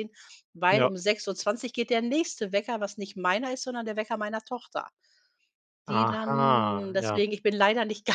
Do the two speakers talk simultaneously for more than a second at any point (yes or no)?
yes